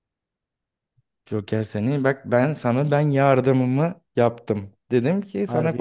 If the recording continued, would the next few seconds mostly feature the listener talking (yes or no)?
no